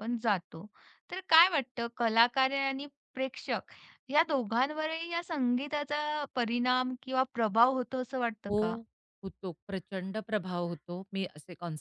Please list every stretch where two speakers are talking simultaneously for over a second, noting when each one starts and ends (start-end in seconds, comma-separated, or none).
none